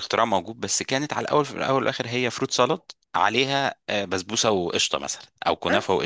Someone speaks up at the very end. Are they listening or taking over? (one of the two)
listening